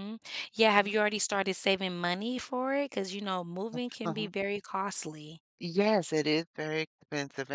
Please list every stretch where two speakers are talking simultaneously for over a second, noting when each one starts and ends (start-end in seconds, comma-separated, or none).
none